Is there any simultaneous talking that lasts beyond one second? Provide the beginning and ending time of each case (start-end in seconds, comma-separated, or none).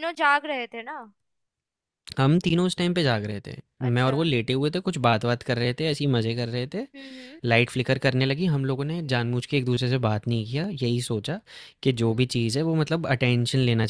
none